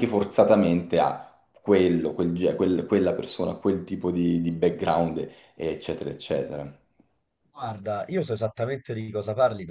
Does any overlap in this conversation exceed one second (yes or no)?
no